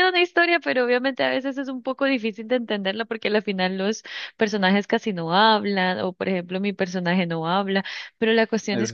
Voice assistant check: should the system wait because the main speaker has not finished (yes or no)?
yes